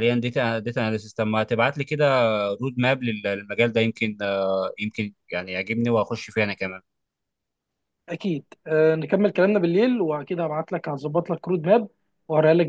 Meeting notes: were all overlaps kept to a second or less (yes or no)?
yes